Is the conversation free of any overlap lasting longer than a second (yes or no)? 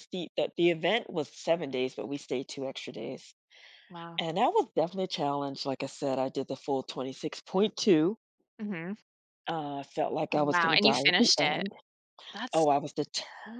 no